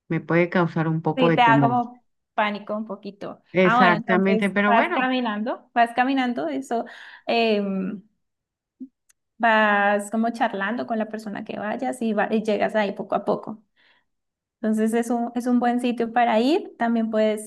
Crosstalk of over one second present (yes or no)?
yes